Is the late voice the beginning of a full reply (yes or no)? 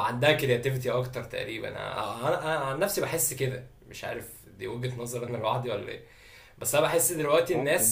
no